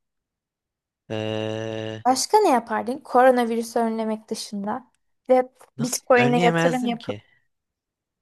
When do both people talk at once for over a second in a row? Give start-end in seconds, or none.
5.8-7.2